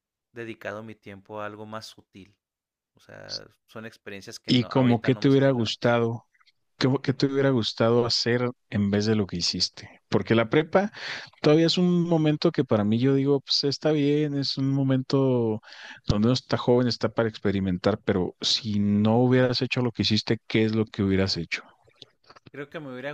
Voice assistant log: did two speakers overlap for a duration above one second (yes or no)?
yes